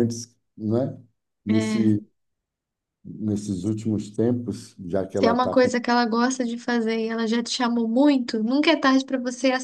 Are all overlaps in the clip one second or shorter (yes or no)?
yes